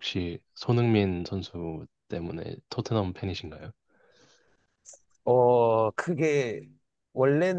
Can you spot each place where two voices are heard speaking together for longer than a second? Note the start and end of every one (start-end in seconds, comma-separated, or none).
none